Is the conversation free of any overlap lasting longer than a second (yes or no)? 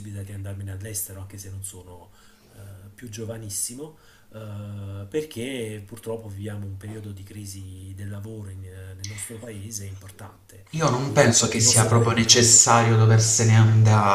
no